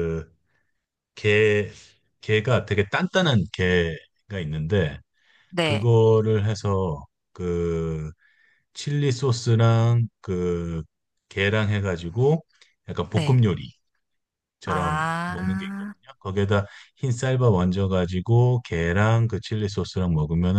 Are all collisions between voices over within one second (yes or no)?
no